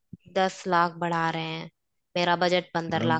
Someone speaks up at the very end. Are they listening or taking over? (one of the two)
taking over